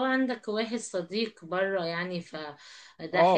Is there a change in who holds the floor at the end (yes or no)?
yes